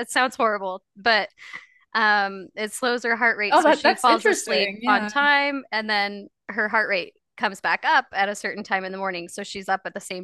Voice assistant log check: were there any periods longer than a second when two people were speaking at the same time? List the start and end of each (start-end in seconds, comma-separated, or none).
3.5-5.1